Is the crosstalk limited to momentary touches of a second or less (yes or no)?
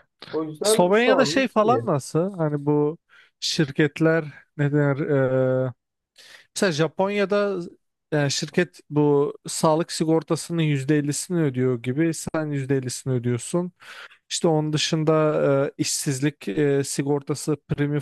no